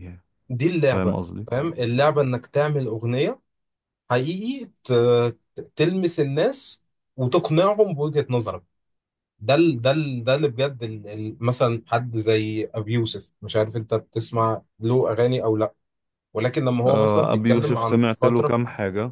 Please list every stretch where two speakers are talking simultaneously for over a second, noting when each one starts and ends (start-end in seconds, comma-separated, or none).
16.9-18.6